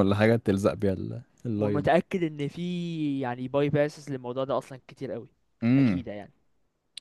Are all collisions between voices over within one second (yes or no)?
yes